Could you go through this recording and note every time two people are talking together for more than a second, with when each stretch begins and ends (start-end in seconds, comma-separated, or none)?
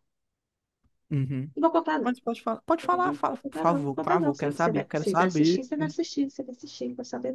2.9-5.7